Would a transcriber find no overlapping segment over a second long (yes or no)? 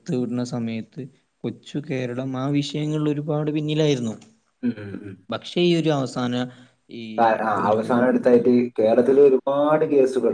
yes